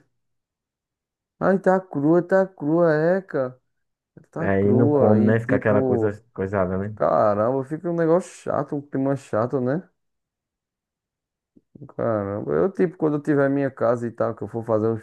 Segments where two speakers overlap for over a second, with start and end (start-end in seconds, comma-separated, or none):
4.4-6.1